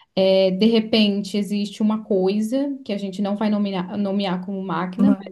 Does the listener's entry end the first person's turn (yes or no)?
no